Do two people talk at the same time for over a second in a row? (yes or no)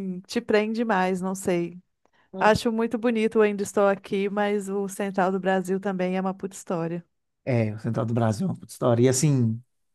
no